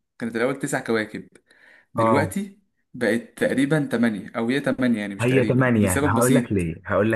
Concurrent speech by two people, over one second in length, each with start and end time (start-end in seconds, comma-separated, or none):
5.2-6.5